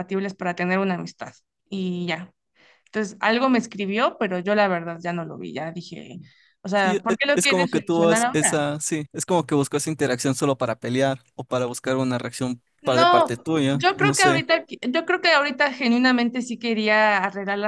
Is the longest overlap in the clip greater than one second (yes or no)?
yes